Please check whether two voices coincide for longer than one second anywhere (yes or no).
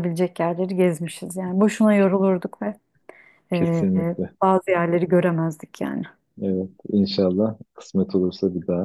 no